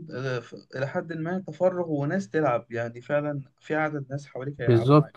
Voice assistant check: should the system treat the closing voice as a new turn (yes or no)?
yes